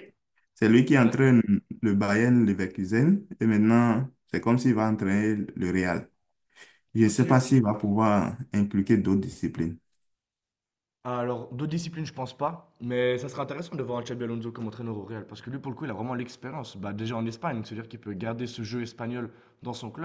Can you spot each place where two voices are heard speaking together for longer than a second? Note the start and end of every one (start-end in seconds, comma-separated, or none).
none